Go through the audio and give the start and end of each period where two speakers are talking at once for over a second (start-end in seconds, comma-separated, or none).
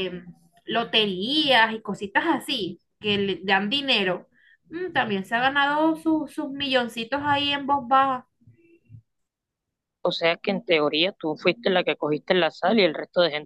none